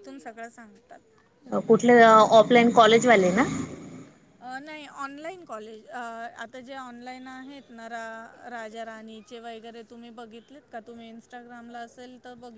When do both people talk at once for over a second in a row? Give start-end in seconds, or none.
none